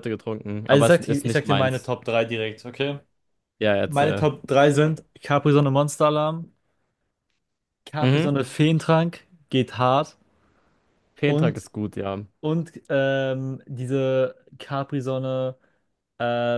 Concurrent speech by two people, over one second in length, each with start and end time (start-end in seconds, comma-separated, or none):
0.6-1.9